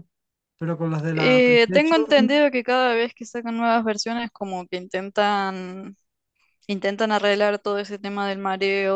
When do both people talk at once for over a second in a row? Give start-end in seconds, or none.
1.1-2.4